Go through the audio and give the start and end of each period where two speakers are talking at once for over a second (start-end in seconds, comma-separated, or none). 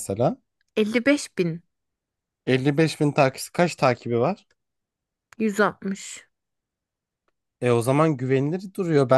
none